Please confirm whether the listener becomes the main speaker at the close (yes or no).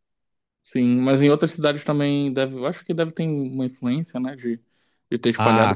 yes